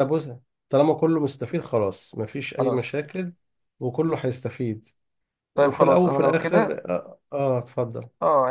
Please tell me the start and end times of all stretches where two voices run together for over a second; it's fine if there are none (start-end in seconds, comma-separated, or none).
5.5-6.8